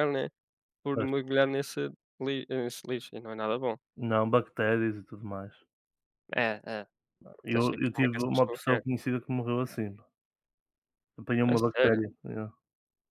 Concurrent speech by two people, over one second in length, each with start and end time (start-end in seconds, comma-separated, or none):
7.5-8.8